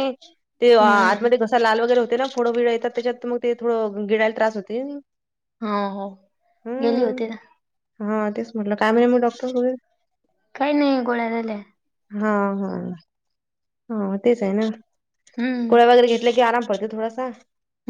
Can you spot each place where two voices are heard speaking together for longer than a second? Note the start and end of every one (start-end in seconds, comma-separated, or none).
none